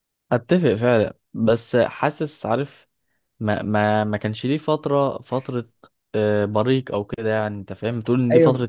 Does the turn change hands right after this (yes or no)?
yes